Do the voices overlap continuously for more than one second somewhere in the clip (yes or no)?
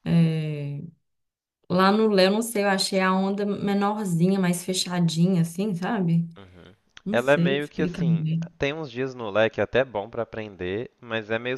yes